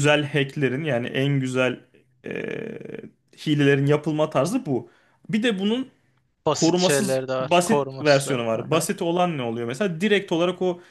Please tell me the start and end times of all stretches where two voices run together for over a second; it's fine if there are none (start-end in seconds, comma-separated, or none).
6.5-8.9